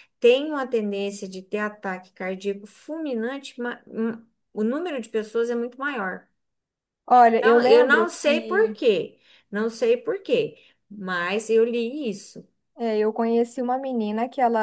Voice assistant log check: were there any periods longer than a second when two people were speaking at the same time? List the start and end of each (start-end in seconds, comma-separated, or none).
7.4-8.6